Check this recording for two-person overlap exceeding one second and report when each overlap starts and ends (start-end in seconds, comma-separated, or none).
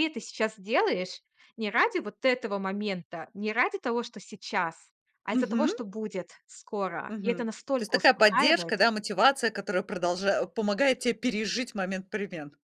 7.1-8.8